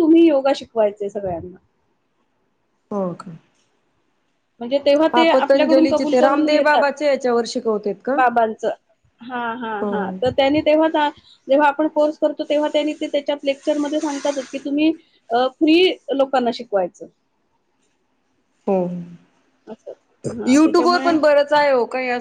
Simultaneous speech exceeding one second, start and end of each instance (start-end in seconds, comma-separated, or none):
5.1-6.9